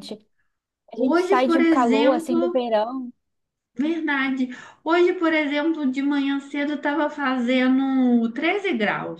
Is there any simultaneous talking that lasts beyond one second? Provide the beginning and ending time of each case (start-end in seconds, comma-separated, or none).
0.9-2.6